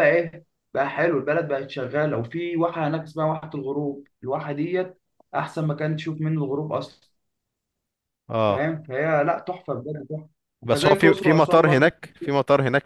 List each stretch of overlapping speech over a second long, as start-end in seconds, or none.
10.7-11.9